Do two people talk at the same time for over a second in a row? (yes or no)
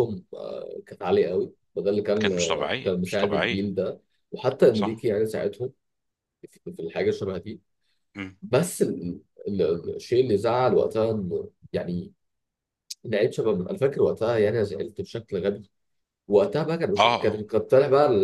yes